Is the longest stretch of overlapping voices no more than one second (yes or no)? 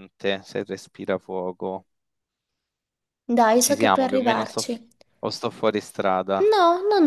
no